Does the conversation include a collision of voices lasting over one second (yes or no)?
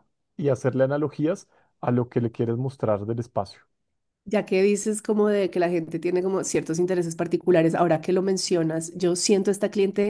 no